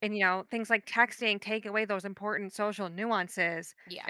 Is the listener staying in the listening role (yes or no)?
yes